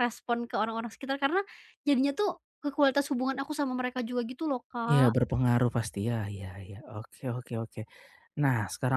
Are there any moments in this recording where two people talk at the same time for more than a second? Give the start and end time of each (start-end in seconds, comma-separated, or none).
none